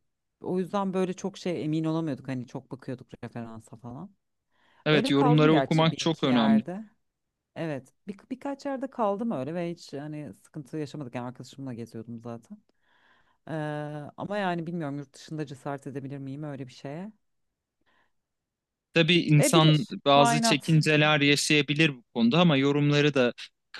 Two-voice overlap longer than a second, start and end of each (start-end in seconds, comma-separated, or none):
4.9-6.6, 19.4-20.8